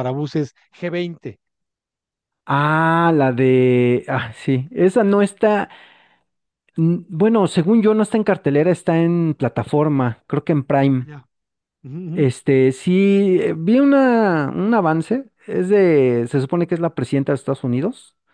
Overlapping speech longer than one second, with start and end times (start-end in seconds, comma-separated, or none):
none